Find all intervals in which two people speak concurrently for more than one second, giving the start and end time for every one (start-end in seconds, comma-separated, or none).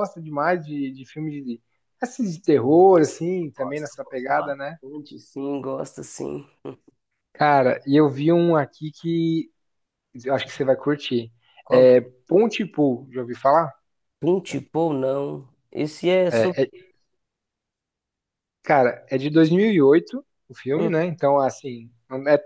3.5-4.8